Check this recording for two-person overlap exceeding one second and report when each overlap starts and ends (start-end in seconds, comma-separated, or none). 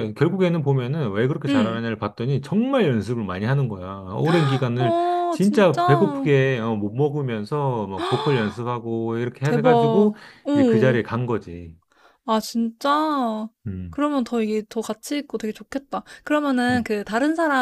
4.8-6.3